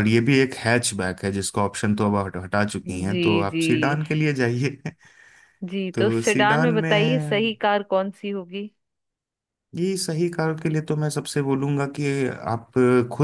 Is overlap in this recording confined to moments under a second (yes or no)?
no